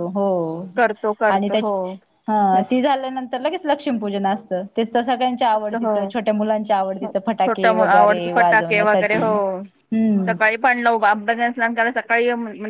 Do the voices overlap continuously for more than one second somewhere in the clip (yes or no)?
yes